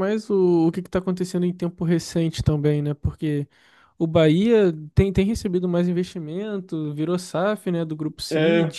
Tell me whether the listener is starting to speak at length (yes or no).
yes